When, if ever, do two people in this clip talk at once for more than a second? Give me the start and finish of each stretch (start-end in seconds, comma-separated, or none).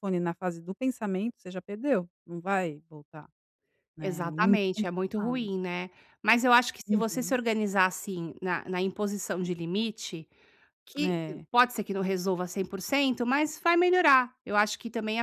4.0-5.5